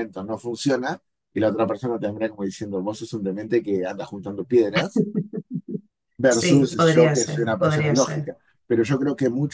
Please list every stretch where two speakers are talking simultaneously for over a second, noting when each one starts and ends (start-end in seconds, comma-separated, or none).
6.3-8.3